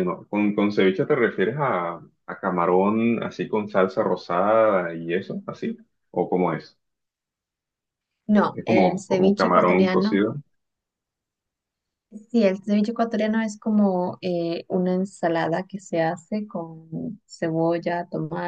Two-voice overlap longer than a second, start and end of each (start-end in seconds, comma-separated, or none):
8.5-10.2